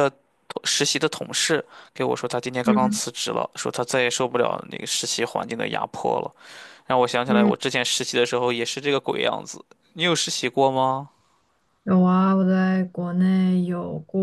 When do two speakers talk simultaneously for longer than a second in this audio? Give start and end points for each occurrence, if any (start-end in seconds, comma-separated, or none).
none